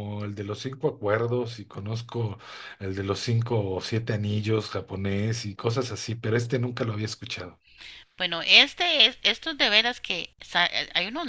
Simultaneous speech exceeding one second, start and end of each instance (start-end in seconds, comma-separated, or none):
none